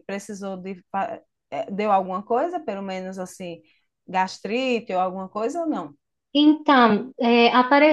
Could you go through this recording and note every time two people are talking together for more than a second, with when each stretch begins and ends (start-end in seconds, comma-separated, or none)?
none